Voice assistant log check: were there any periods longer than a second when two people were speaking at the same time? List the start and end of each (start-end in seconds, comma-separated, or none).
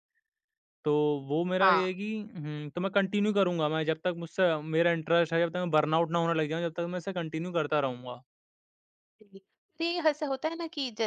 none